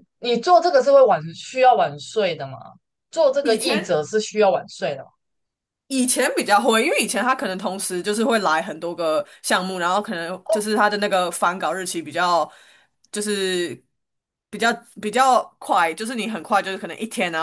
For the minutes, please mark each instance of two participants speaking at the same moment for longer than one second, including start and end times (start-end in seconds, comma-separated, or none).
none